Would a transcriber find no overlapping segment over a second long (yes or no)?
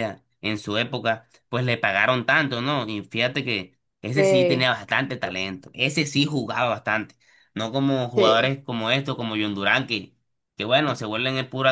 no